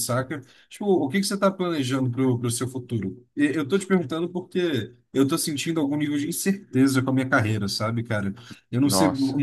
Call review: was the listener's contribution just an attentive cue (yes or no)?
yes